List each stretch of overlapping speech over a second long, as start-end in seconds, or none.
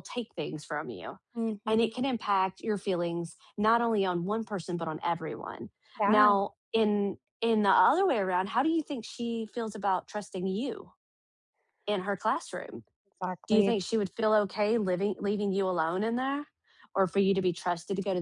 none